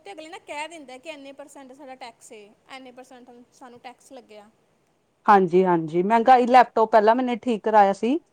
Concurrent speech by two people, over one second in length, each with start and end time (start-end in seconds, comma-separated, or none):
none